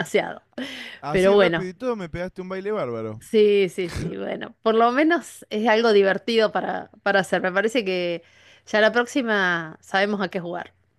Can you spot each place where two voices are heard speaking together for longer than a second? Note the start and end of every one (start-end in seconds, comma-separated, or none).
none